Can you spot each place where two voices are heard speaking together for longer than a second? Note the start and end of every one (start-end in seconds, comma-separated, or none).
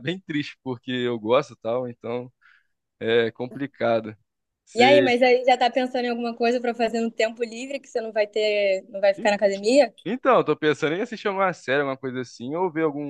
none